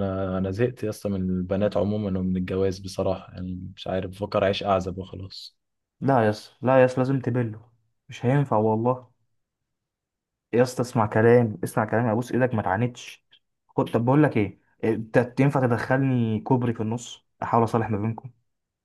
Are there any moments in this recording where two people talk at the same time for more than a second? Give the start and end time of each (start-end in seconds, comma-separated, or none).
none